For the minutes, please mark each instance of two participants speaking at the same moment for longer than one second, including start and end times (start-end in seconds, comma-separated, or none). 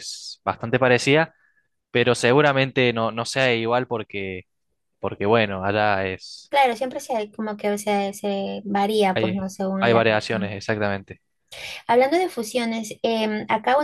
9.1-10.5